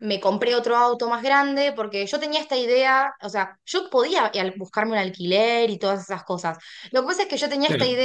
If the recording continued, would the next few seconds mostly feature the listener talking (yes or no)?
no